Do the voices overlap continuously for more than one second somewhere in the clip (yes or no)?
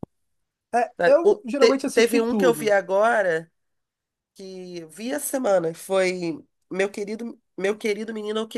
yes